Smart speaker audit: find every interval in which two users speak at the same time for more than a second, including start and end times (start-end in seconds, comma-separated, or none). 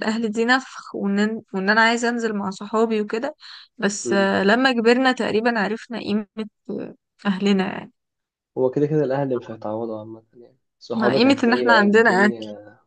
10.9-12.3